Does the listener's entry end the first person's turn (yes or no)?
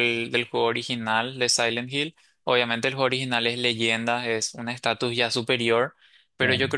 no